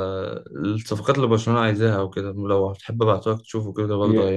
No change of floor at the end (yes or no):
no